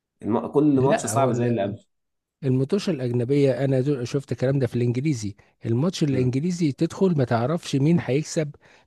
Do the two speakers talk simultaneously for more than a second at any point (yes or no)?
no